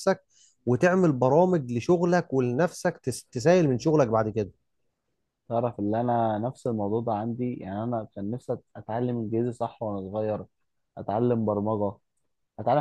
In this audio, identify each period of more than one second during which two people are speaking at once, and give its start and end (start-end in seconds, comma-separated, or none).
none